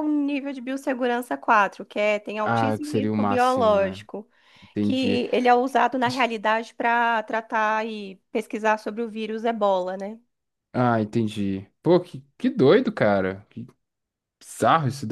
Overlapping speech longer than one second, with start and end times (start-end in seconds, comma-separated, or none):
2.4-4.0